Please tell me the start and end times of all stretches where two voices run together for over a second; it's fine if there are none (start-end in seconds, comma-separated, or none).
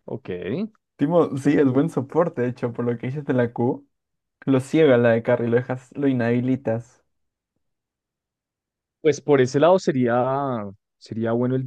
none